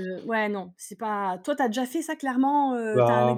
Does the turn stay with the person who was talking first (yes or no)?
no